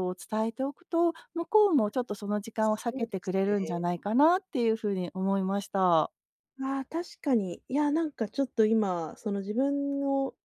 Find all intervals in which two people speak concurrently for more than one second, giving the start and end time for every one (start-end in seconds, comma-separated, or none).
2.6-3.8